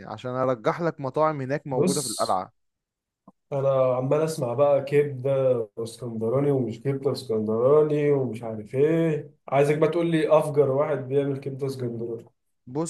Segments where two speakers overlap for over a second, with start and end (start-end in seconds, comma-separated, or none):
none